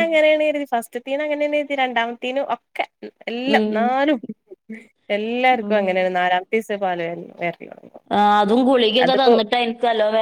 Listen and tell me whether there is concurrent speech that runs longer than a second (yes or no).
no